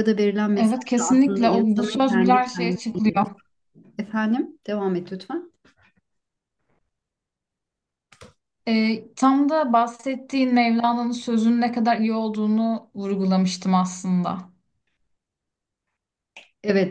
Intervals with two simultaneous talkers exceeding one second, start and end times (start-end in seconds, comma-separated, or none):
0.5-2.8